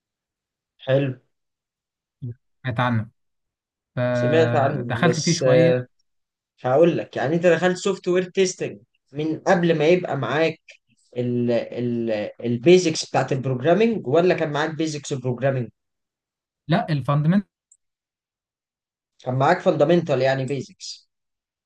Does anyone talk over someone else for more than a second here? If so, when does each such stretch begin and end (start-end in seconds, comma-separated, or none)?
4.1-5.7